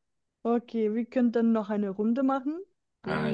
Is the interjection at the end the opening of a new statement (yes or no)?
yes